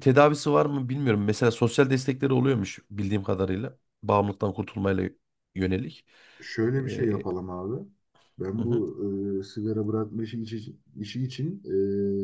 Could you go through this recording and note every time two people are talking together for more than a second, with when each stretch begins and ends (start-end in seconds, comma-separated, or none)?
none